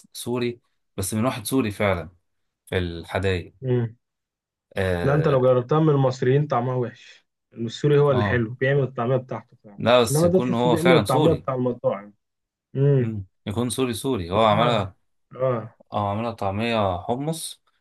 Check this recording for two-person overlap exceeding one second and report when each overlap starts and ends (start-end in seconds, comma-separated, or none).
9.8-11.5